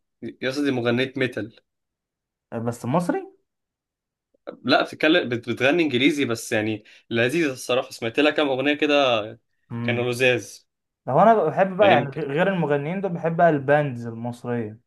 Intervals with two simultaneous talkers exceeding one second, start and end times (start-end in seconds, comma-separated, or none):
none